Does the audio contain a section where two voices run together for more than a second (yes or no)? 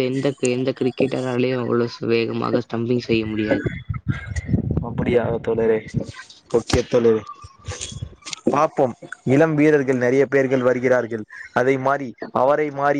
no